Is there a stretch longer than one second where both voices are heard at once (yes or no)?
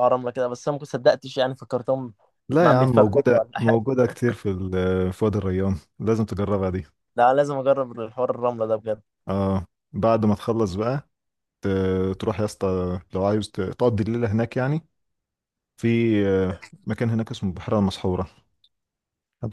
yes